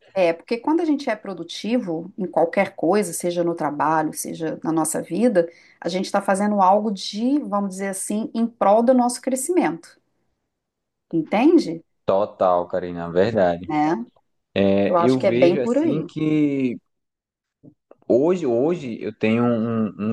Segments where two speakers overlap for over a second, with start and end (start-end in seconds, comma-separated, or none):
14.9-16.1